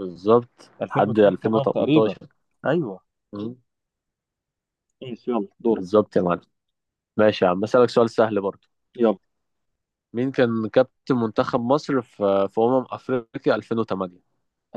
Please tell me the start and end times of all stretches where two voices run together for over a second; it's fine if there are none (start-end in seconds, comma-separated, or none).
0.8-2.2